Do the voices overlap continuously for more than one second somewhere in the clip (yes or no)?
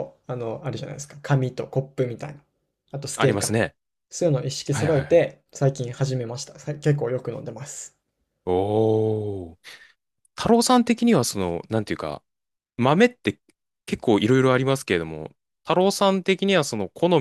no